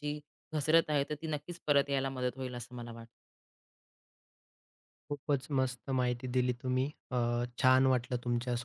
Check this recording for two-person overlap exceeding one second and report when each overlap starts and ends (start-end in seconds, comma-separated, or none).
none